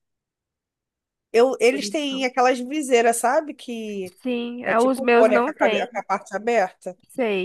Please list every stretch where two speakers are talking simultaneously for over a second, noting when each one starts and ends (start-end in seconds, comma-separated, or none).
4.6-6.0